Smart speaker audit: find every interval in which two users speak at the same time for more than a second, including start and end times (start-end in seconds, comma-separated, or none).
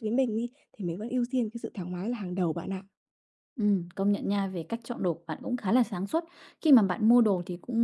none